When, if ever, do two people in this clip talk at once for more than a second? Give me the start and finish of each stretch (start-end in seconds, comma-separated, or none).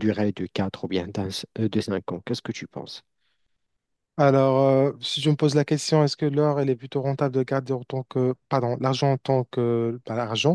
none